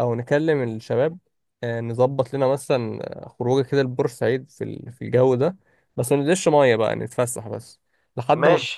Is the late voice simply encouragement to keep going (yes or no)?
yes